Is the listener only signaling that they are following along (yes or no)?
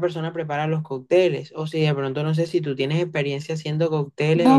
no